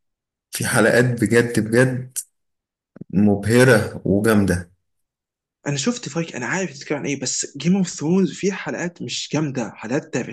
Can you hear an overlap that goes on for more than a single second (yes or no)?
no